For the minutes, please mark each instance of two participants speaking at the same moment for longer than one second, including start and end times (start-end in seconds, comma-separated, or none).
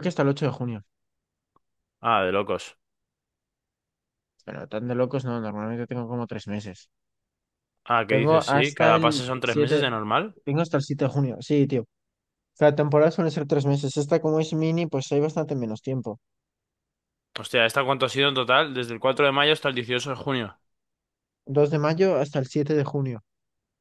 8.1-9.9